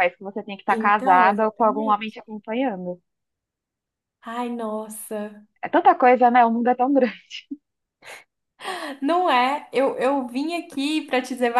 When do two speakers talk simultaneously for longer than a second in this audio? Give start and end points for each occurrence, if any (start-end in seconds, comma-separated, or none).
0.7-2.2